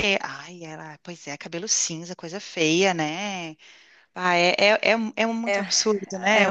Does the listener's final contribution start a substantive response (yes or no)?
yes